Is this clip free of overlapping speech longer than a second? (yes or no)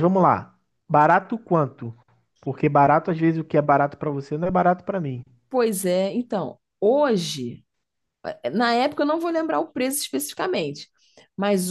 yes